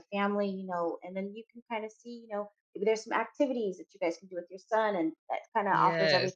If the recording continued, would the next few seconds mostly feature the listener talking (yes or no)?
no